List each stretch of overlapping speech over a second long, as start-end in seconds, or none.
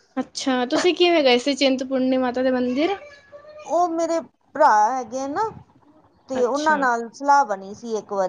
none